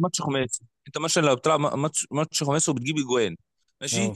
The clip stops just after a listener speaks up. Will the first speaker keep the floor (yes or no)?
yes